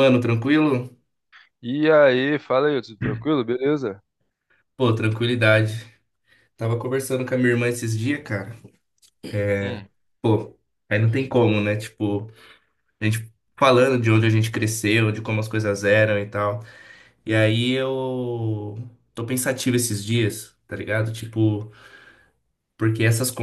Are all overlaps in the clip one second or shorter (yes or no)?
yes